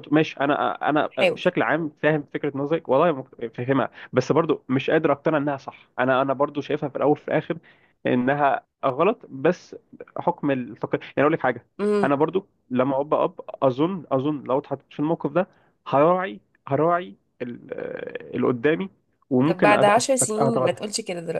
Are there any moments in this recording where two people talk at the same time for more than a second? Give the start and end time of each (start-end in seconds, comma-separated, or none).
19.4-20.8